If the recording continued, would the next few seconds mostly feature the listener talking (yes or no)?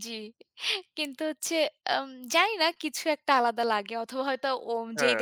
no